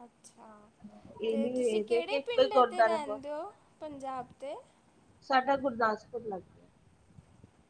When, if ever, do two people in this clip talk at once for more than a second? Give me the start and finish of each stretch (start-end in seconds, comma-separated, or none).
1.3-3.2